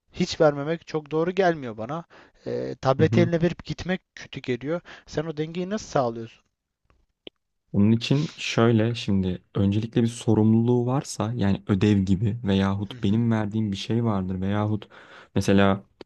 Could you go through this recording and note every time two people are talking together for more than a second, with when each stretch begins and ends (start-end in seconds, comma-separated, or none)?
none